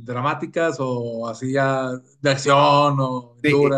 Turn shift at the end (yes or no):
yes